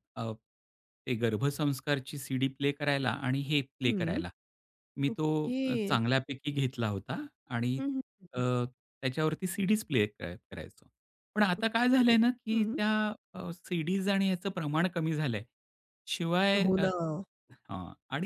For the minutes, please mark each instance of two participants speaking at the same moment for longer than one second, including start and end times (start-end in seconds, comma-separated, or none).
11.6-12.8